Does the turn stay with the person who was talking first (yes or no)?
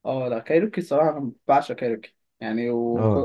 yes